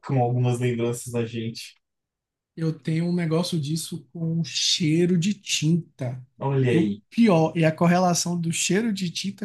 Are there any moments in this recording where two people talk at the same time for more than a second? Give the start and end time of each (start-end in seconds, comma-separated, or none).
none